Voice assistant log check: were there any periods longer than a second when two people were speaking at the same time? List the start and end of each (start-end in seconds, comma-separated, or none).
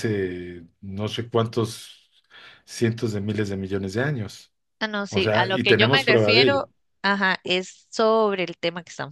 5.1-6.7